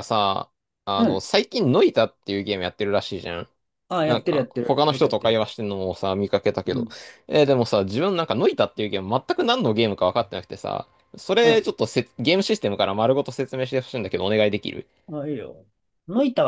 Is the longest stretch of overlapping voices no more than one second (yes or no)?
no